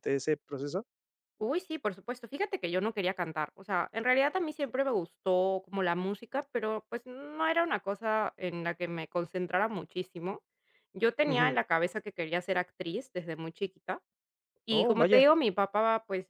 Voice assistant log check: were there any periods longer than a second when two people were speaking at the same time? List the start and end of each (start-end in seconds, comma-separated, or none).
none